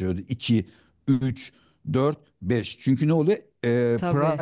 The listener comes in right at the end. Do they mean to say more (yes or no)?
no